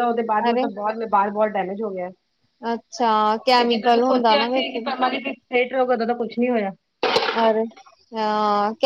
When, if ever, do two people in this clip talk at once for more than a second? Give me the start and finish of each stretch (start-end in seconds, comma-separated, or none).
3.6-4.8